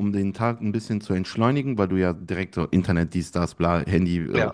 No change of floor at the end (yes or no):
yes